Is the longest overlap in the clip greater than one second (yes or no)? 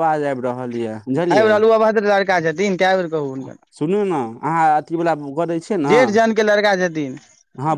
no